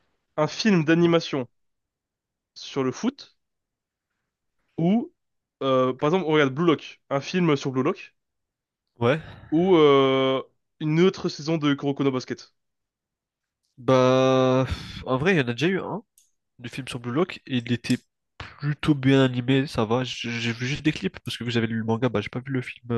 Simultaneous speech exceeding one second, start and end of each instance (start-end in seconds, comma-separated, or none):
none